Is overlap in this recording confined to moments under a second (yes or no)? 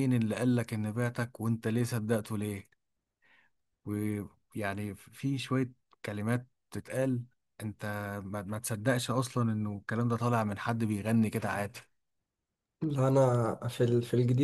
yes